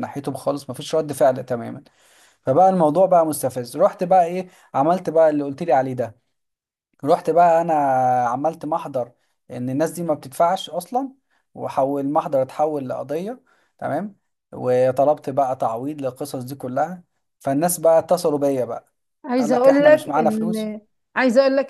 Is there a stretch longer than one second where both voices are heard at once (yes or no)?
yes